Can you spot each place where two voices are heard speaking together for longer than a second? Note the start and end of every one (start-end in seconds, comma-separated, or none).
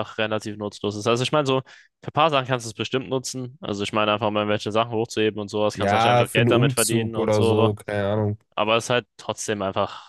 5.7-7.7